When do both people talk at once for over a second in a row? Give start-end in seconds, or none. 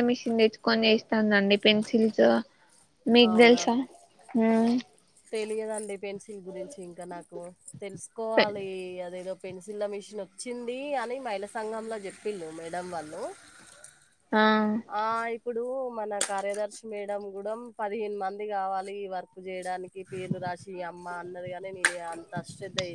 none